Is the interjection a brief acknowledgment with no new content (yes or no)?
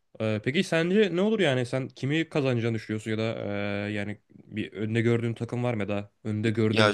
yes